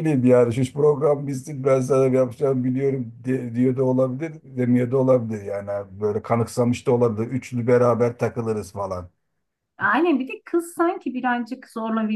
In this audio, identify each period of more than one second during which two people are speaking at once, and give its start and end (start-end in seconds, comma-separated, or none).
none